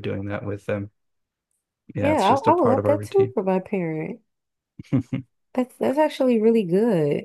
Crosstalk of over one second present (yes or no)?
yes